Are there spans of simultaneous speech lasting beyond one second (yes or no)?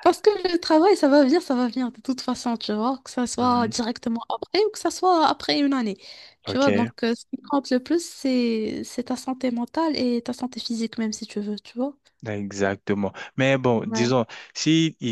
no